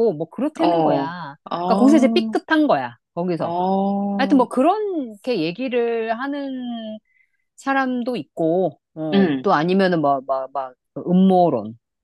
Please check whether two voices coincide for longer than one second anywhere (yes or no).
yes